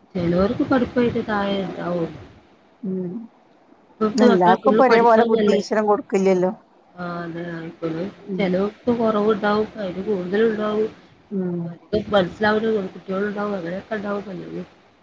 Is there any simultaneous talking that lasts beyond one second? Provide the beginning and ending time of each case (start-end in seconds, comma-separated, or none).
4.3-5.6